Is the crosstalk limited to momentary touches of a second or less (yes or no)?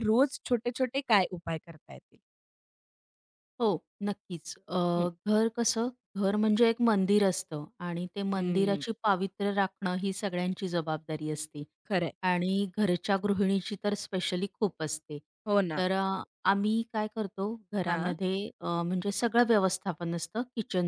yes